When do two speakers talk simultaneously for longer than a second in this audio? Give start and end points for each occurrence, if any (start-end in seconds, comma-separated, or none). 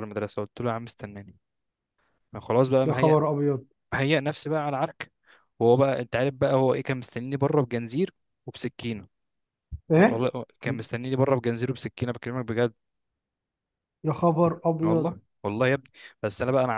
none